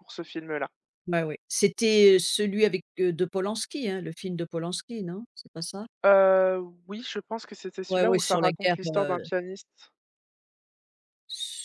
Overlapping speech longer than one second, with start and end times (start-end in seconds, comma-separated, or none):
7.9-9.2